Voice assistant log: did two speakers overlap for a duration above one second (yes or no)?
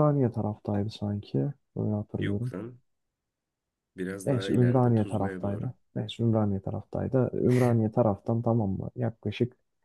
yes